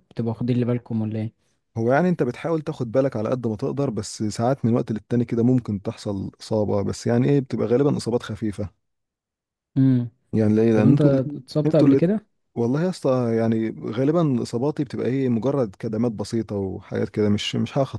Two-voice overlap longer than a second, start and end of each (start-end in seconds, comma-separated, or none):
10.7-12.0